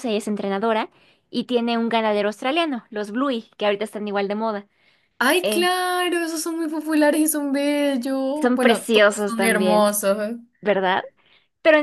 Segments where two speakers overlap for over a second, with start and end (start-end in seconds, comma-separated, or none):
8.4-9.9